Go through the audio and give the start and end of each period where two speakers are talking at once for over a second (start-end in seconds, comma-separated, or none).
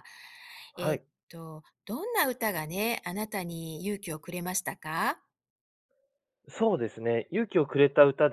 none